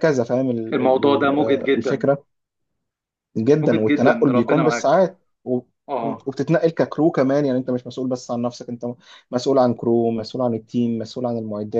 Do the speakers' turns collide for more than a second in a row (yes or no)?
yes